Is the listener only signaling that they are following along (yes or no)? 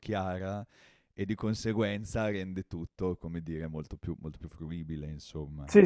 no